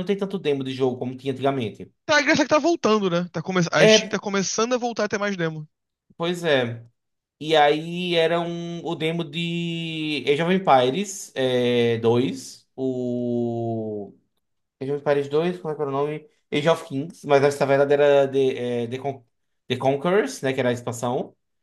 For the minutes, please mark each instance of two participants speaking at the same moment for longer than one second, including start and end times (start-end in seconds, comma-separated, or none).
none